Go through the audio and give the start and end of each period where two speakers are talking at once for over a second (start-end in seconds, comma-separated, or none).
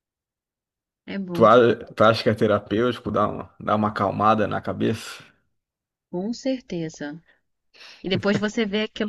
none